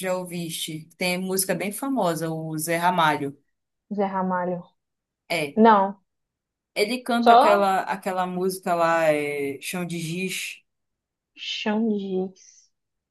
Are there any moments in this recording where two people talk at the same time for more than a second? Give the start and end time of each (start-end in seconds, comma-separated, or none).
none